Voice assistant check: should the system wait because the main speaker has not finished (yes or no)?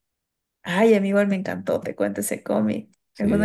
yes